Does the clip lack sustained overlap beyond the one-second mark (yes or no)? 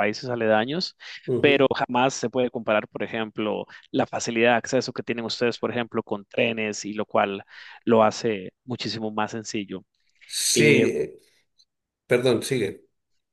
yes